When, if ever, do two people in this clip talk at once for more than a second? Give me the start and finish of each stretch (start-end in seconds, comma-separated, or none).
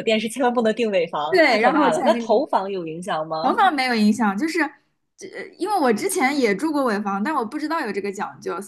1.3-2.5